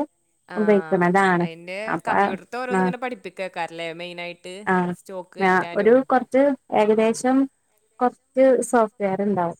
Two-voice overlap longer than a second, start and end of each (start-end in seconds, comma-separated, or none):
none